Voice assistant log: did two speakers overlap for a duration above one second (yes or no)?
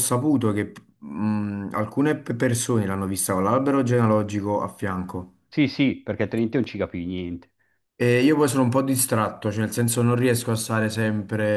no